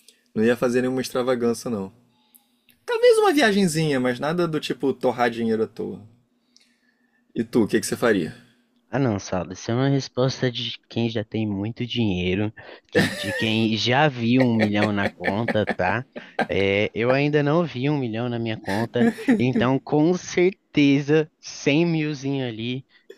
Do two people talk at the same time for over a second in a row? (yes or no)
no